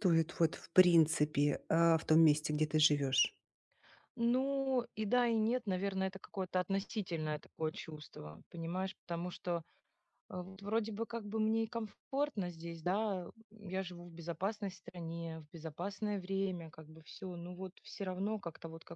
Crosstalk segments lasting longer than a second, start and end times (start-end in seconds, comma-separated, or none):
none